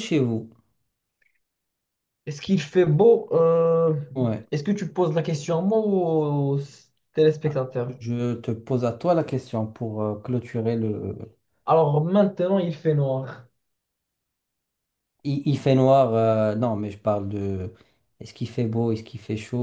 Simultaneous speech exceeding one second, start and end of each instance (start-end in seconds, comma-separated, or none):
none